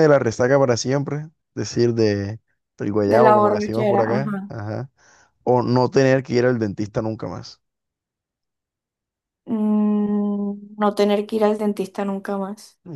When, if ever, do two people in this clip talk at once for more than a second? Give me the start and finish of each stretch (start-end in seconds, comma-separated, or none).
3.0-4.5